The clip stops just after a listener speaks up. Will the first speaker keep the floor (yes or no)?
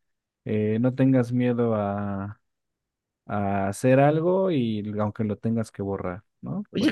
no